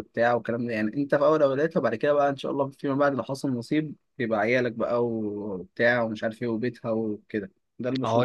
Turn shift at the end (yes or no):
yes